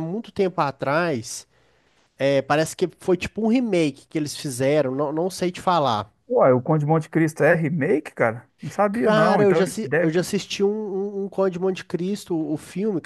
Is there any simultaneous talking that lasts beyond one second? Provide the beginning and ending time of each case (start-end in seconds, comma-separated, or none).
8.9-10.3